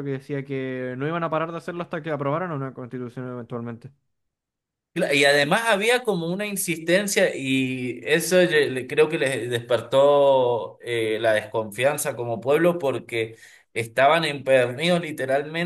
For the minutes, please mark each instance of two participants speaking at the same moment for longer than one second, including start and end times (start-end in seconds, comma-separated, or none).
none